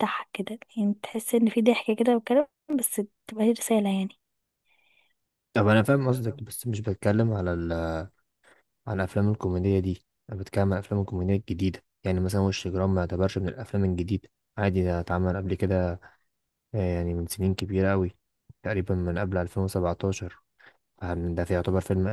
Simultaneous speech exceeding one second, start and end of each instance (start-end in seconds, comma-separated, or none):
none